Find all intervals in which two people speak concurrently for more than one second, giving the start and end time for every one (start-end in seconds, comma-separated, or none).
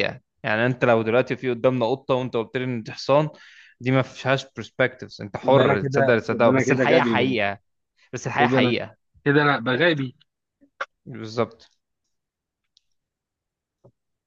5.5-7.4